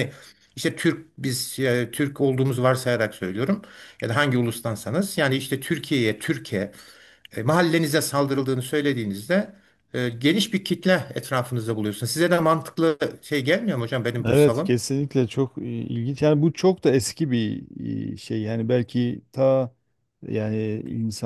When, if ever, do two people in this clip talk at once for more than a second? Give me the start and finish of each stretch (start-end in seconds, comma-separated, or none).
none